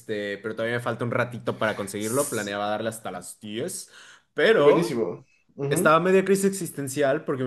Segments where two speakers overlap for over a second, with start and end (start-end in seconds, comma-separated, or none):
none